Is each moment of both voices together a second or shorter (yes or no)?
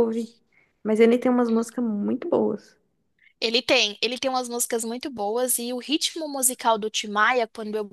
yes